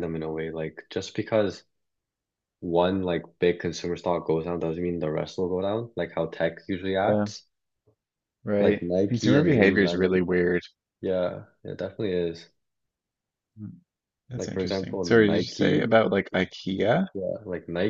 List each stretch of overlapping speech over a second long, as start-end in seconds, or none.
8.6-10.3, 14.3-15.9